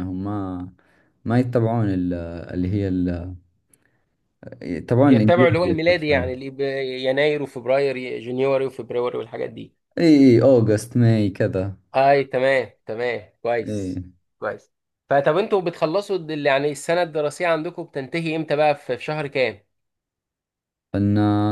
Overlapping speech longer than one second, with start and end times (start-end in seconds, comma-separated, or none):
5.0-6.3